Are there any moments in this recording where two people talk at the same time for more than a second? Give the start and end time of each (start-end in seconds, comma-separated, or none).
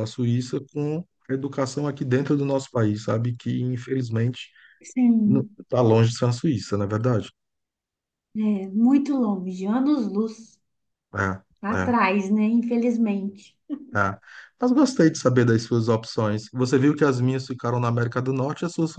none